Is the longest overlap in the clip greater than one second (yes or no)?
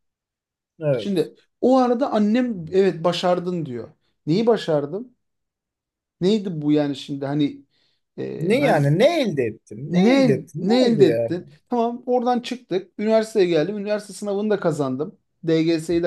yes